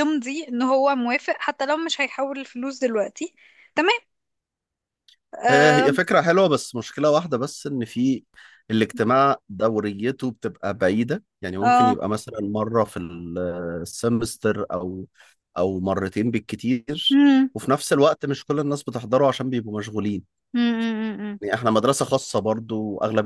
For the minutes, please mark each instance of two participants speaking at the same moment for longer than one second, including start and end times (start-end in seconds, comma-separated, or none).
none